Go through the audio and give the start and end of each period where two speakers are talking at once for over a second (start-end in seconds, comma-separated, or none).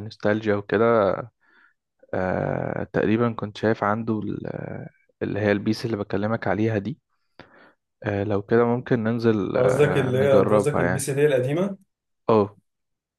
9.6-11.1